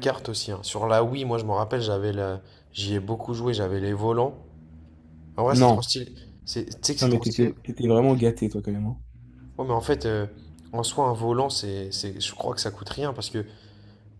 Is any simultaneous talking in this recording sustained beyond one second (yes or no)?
no